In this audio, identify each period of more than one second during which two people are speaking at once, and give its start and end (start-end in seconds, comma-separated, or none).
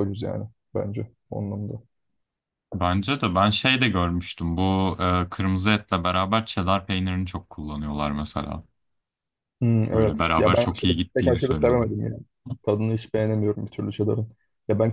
9.9-11.9